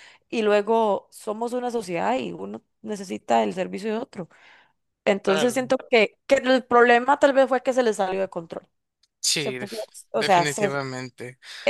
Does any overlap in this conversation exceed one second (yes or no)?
yes